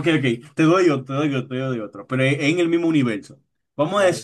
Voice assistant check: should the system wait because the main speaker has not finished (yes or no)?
yes